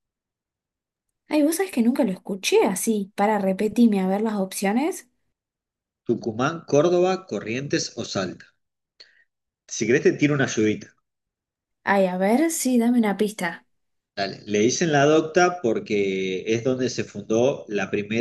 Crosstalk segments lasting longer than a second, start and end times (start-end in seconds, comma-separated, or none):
none